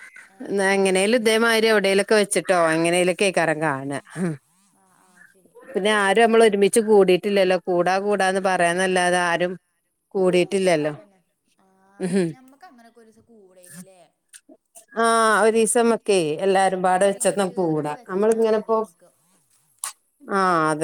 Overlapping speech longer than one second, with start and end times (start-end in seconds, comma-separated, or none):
17.1-18.8